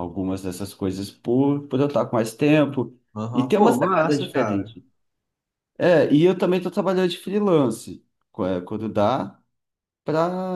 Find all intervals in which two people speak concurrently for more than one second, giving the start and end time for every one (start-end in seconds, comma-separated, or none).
3.3-4.8